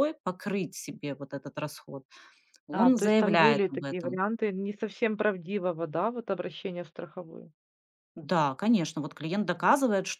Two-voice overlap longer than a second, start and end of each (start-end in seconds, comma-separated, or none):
2.7-4.2